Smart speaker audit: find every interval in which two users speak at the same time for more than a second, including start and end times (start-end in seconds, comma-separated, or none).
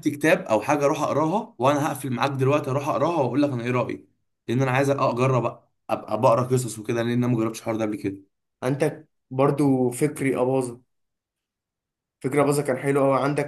none